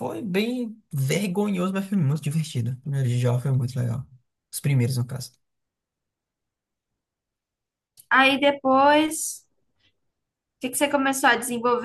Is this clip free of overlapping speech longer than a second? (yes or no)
yes